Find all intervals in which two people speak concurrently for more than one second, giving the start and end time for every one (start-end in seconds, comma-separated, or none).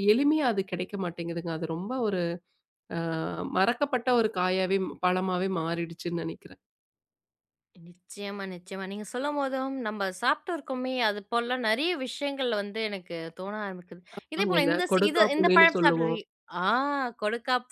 14.4-16.2